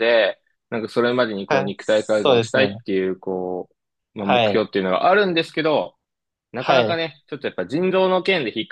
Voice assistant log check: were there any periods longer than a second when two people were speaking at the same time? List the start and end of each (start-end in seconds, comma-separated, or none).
1.5-2.8